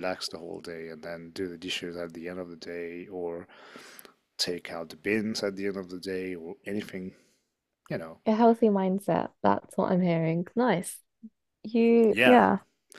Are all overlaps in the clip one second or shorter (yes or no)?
yes